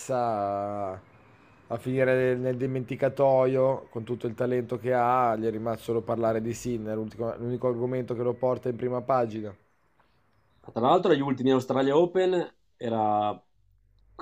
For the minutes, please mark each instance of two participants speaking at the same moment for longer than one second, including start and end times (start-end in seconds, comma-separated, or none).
none